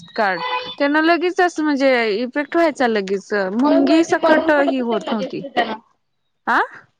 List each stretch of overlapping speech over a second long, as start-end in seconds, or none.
3.6-5.4